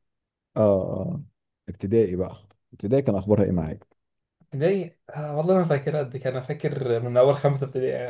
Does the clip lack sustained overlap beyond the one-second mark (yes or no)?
yes